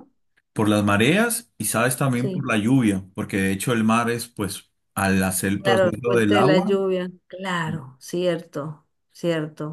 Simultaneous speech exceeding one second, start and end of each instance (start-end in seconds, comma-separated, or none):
5.6-6.8